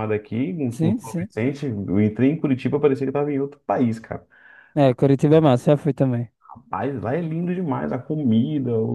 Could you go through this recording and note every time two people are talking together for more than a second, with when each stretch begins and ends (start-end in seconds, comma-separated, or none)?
none